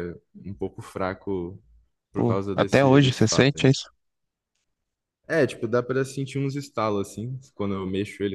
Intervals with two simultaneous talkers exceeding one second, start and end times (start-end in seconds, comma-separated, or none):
2.1-3.7